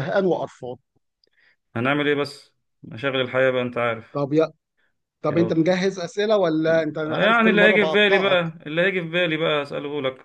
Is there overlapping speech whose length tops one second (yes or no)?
yes